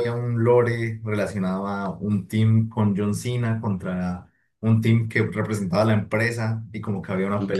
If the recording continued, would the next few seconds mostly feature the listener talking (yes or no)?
no